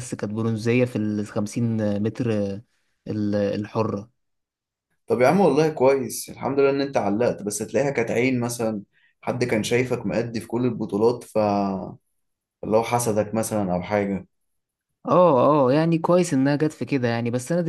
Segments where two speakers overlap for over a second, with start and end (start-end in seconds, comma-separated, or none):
none